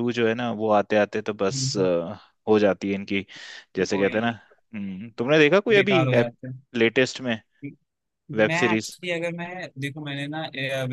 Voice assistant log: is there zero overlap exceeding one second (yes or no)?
yes